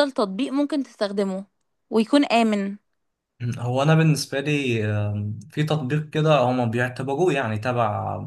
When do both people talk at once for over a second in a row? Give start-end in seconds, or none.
none